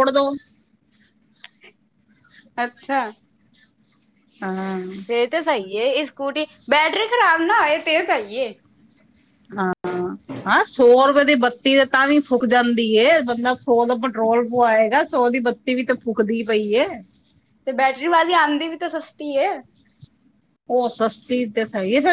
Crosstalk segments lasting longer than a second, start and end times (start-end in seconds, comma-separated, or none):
none